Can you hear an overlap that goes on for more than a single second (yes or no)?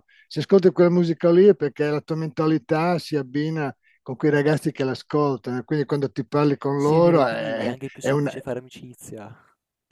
yes